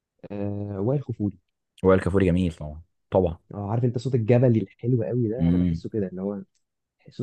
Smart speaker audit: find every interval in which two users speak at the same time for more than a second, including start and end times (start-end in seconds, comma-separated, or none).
none